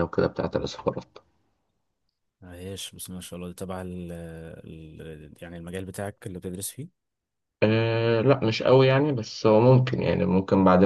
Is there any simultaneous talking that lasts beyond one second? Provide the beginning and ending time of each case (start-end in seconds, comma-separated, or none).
none